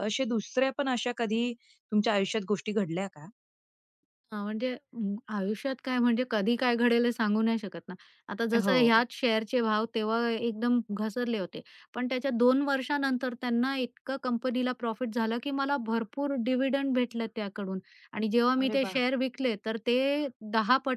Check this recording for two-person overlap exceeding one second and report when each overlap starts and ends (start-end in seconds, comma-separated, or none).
none